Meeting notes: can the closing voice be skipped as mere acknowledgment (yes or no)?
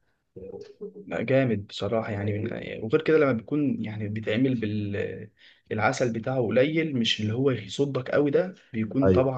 yes